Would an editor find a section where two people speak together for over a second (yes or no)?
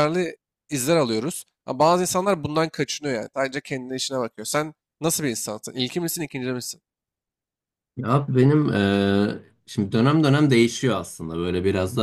no